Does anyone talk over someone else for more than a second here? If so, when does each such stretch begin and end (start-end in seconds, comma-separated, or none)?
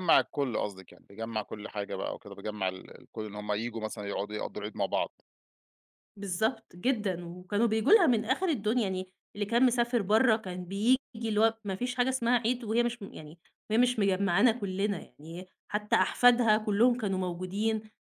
none